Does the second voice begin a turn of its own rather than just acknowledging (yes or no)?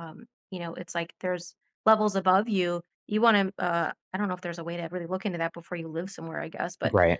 no